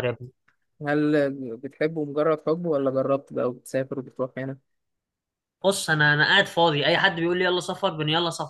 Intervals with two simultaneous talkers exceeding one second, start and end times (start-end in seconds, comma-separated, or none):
none